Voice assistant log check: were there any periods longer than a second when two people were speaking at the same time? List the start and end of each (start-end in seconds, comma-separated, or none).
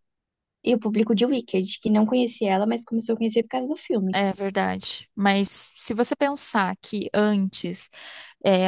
none